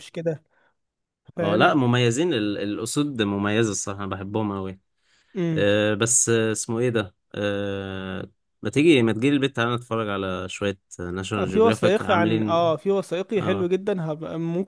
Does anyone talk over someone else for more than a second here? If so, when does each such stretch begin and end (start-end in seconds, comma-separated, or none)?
11.4-12.6